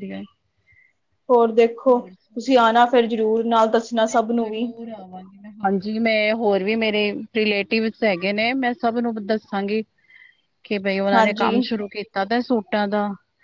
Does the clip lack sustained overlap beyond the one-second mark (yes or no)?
no